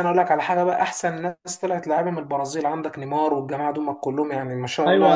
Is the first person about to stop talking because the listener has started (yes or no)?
yes